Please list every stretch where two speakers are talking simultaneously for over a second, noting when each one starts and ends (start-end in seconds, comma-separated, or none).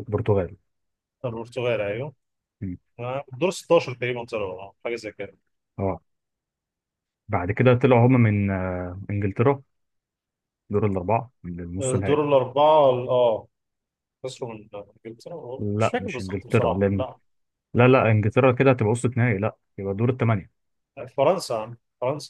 15.6-17.1